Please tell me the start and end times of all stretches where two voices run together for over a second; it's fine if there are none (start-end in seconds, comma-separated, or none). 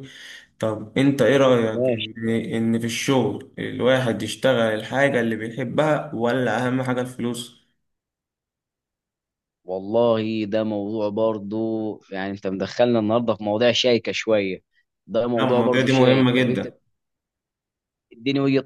15.4-16.7